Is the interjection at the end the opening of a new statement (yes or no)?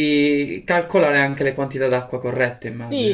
yes